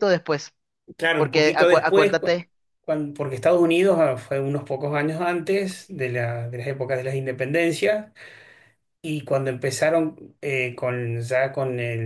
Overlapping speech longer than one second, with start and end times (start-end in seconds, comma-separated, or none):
1.2-2.4